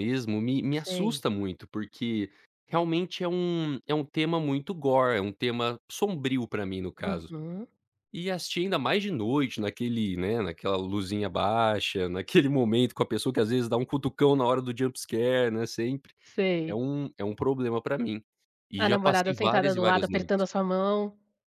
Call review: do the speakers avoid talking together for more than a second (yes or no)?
no